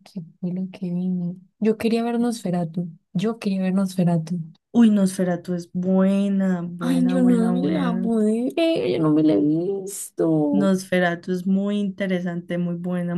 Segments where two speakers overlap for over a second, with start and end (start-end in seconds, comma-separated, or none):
6.8-8.1